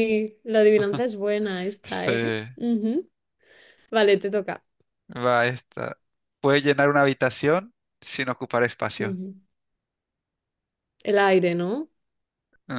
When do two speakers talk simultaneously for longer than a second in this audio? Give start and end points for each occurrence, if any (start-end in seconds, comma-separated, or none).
none